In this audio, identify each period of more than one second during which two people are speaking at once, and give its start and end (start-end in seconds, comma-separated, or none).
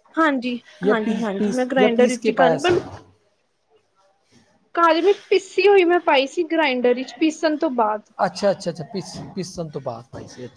0.8-2.6